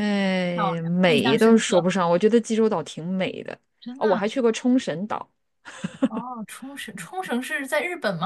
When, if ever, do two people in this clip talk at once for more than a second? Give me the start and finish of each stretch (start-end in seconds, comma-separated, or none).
0.5-1.9